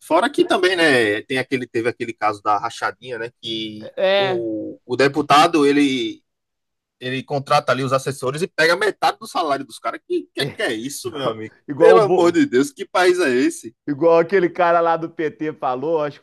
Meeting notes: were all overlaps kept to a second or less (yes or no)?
no